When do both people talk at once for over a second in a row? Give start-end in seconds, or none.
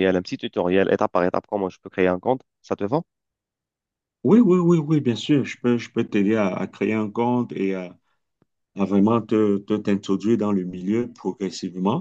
none